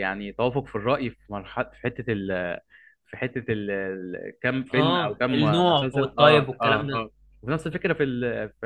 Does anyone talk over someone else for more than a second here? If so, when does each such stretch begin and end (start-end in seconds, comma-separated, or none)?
4.7-7.1